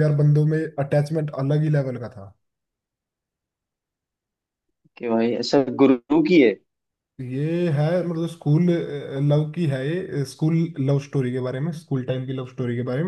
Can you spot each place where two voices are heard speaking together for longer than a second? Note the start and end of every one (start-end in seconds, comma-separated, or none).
none